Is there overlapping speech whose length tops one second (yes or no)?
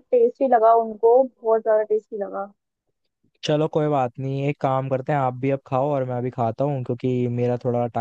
no